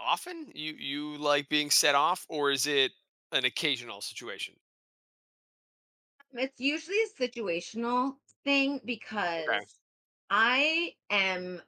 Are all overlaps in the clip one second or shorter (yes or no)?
yes